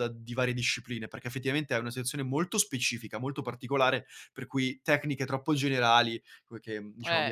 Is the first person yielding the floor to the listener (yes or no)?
no